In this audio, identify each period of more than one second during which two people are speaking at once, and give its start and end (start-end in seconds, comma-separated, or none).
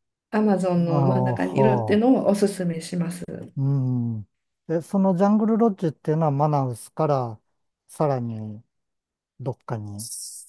0.9-2.2